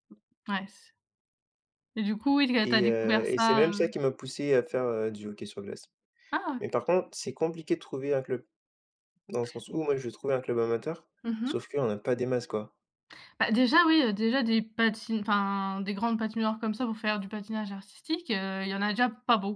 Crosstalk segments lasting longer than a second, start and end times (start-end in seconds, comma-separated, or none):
2.6-3.9